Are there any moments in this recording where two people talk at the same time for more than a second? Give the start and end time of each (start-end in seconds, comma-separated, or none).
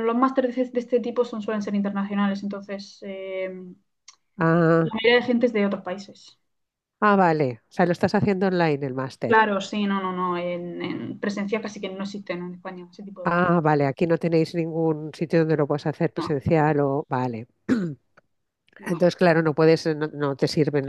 none